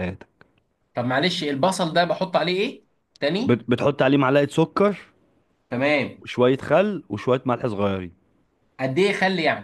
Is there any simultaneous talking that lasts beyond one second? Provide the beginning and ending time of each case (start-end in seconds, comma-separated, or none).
none